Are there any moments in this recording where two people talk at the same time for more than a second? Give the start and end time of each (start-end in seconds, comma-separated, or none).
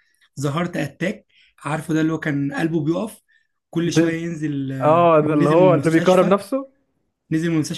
4.8-6.4